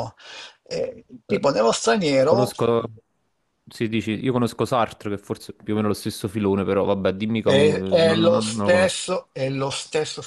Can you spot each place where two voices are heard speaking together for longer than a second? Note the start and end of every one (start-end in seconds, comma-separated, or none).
7.4-9.1